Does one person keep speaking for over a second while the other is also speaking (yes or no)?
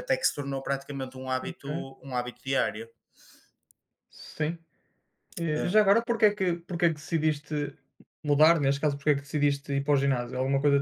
no